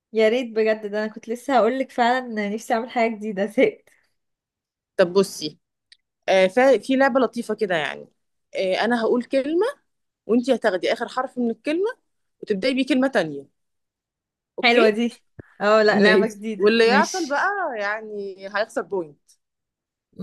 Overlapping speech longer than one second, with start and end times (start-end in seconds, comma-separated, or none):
16.0-17.4